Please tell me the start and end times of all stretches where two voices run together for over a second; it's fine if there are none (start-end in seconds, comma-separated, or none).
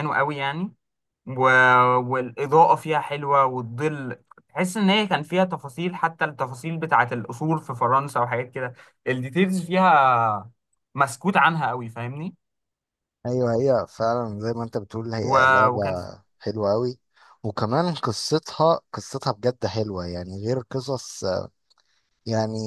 none